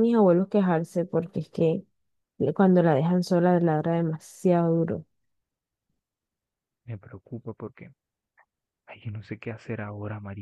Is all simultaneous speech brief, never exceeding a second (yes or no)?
yes